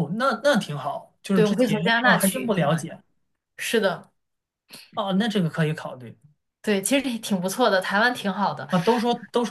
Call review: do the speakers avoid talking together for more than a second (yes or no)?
no